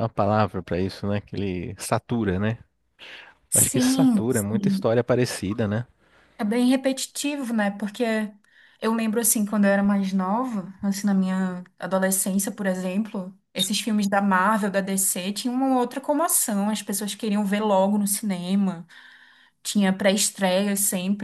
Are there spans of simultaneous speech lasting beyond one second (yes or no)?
yes